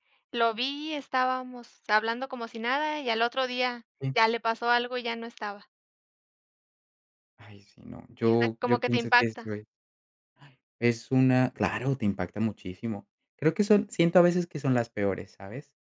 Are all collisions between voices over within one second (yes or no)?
no